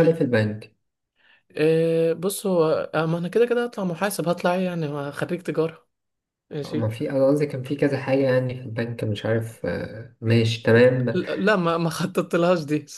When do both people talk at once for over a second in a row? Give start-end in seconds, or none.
none